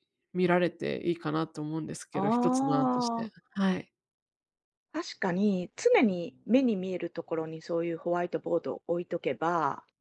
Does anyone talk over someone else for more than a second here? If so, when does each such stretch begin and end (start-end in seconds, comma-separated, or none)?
none